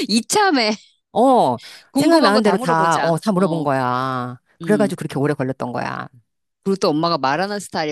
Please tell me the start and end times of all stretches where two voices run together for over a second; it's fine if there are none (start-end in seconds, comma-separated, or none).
1.9-3.7